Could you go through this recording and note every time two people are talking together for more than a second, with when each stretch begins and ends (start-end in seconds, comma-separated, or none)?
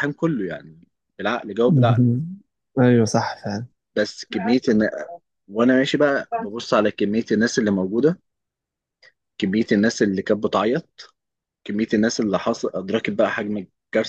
none